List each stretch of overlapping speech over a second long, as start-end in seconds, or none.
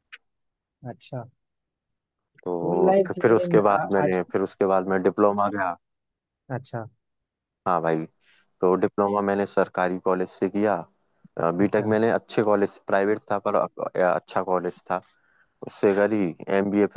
2.6-4.2